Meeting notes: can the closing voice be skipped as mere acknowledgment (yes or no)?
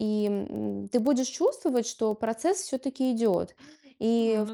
yes